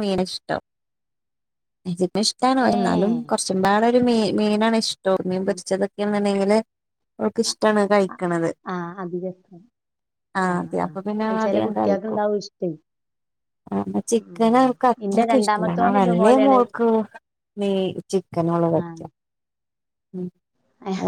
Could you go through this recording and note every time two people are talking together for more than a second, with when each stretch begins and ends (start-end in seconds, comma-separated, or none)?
15.1-16.6